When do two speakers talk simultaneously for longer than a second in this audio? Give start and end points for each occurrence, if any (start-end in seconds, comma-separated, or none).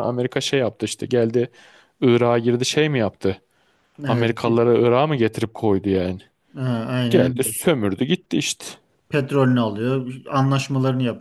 none